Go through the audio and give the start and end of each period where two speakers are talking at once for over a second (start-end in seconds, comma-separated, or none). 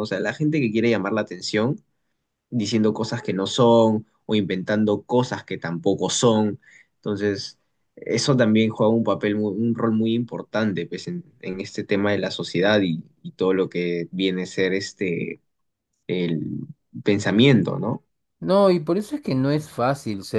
none